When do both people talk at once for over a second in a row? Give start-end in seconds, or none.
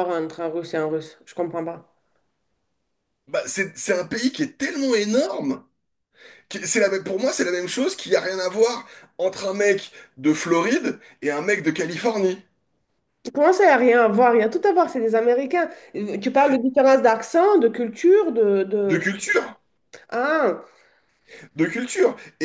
none